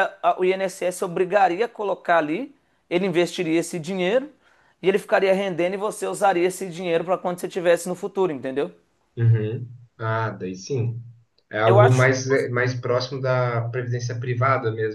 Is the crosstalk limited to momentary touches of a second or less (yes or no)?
yes